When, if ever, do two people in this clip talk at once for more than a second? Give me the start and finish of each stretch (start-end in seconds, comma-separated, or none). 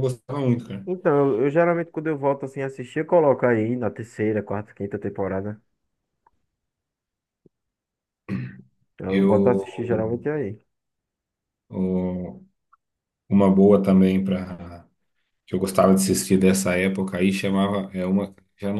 none